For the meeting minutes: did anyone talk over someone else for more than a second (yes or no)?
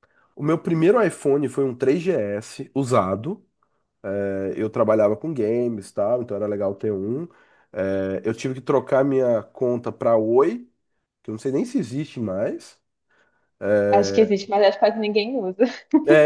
no